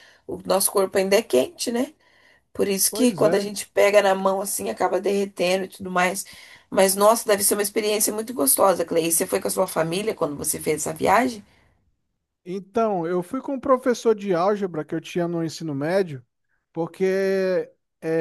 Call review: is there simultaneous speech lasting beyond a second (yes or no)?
no